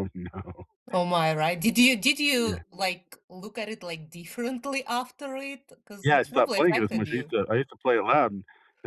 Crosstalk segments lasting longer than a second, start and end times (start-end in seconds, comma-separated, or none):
6.0-7.3